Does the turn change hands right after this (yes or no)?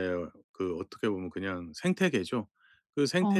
no